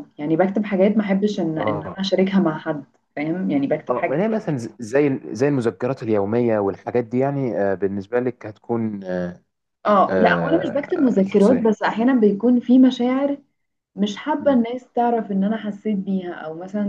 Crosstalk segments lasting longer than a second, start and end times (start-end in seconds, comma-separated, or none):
10.1-11.8